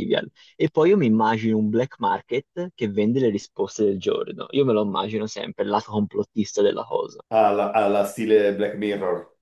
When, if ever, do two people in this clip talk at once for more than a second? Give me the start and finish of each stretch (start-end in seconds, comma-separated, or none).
none